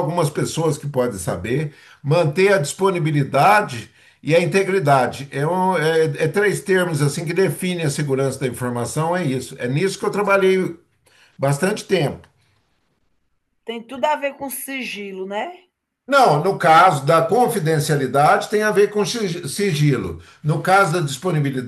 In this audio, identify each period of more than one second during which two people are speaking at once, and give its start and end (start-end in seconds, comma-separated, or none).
none